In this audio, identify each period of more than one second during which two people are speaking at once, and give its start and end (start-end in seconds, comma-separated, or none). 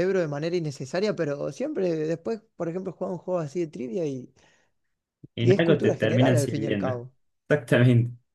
5.4-7.0